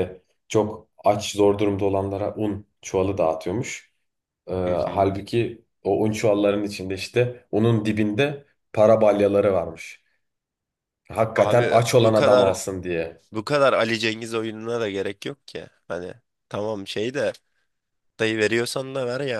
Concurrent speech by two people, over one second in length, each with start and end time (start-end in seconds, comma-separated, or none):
11.3-12.7